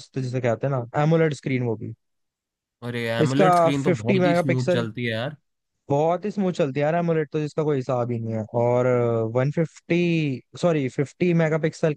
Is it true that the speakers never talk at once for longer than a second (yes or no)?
no